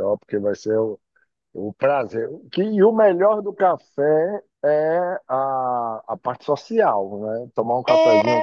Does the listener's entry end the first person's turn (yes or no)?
yes